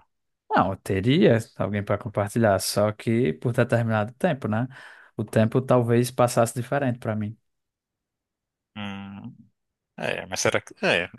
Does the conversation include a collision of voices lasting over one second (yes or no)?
no